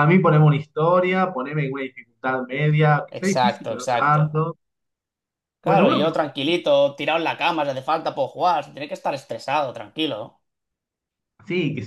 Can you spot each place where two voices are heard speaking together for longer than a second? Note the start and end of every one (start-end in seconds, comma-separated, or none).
3.1-4.3